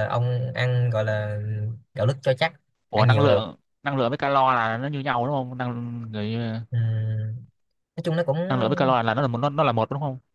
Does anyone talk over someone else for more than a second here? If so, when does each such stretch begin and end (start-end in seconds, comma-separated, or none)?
none